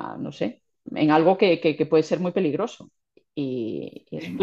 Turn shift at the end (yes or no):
no